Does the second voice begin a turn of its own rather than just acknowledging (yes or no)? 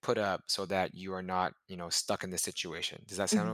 yes